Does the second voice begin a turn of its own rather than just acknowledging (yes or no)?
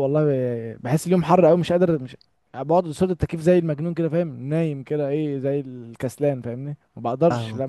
yes